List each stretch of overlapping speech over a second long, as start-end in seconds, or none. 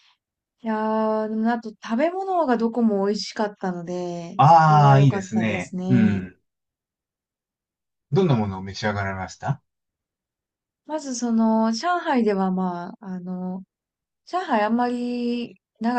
4.4-6.2